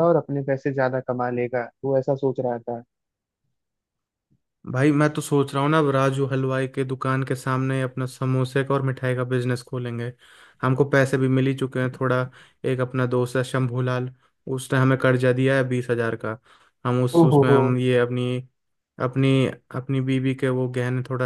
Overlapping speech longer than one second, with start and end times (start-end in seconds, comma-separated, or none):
none